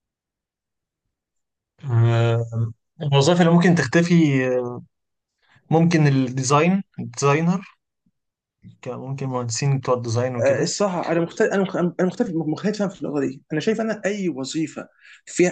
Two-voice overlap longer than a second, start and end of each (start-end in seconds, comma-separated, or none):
none